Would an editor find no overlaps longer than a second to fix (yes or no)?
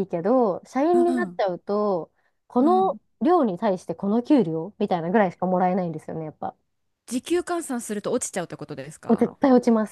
yes